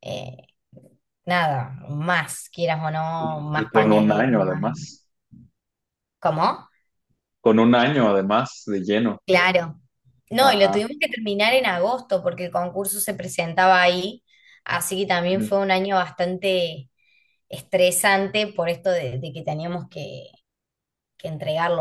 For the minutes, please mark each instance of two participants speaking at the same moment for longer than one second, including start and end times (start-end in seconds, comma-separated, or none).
3.2-4.7